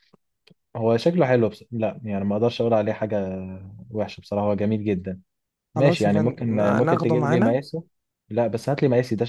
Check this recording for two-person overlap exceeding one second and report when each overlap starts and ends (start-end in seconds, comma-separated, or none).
5.8-7.6